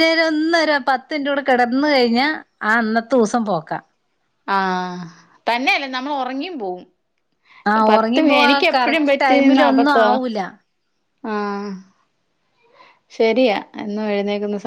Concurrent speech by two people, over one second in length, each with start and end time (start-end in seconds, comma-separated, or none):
7.9-10.1